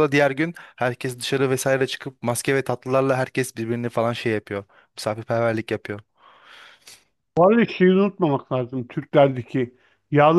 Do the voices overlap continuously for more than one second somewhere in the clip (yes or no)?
no